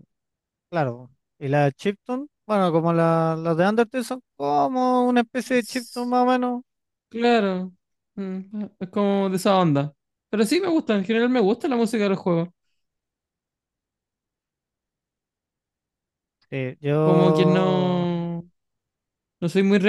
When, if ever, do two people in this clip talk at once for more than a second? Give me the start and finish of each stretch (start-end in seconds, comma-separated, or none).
17.0-18.2